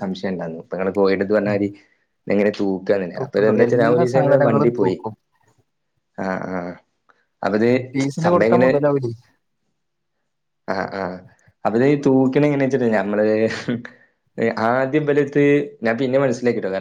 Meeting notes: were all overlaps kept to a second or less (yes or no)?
no